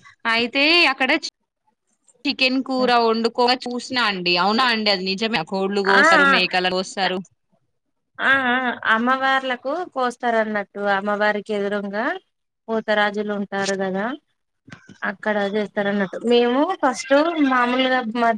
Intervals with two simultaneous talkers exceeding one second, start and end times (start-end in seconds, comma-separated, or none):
none